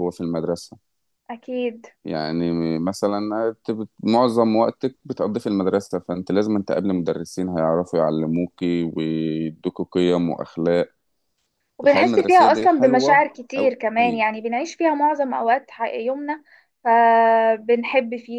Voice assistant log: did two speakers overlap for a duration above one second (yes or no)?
yes